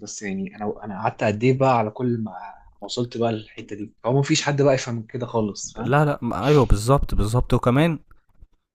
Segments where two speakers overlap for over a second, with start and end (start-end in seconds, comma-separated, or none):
none